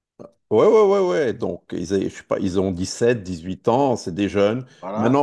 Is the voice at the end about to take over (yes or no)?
no